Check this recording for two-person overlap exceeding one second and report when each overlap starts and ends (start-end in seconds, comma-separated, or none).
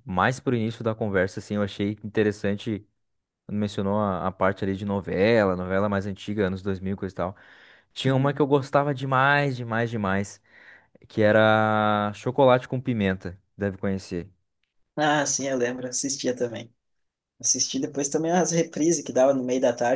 none